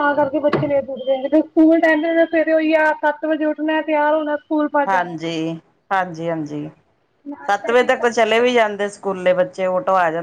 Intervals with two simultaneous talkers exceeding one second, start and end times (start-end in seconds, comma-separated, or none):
7.5-8.7